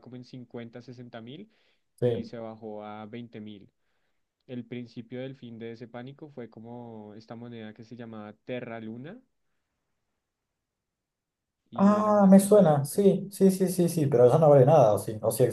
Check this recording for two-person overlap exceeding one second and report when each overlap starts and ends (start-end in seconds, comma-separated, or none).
11.7-13.1